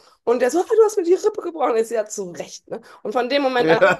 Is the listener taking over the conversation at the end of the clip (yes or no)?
no